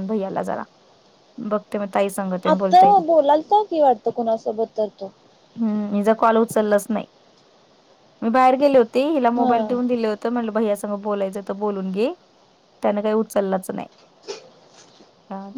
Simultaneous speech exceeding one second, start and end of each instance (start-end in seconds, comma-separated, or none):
none